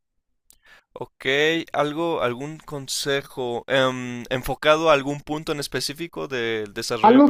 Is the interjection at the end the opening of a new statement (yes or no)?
yes